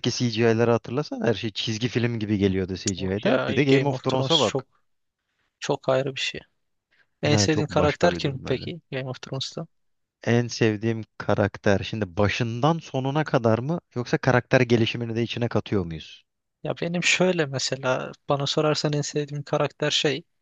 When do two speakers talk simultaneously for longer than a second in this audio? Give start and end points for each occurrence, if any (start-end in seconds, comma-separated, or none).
3.0-4.7, 7.3-8.7